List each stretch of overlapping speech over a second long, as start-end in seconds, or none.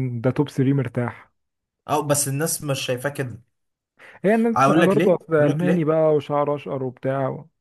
4.5-5.9